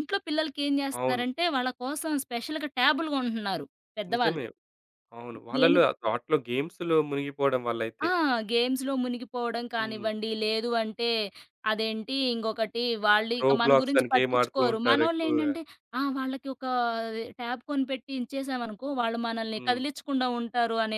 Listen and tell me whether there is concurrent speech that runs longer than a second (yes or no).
yes